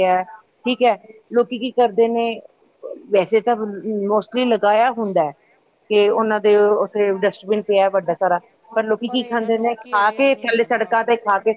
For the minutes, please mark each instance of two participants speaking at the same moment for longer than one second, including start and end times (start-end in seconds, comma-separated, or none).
9.2-11.0